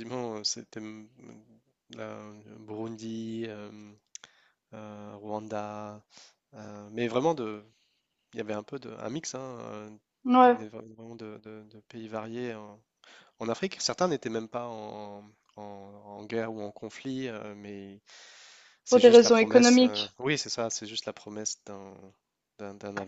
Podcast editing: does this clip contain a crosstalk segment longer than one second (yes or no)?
yes